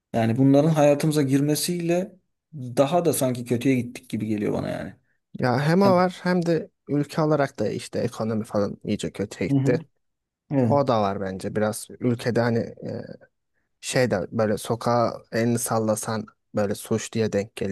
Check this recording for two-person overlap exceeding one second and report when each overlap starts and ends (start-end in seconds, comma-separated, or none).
none